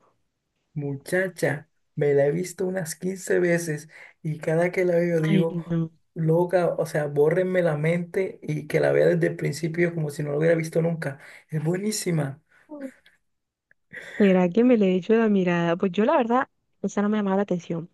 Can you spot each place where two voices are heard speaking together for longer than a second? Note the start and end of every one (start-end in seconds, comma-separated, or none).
none